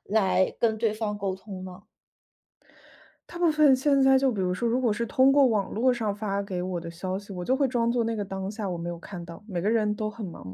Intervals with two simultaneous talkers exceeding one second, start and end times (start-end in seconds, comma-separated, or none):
none